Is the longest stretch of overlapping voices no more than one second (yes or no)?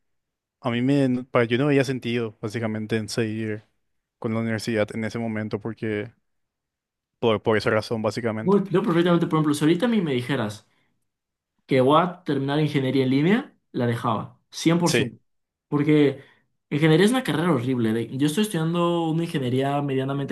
yes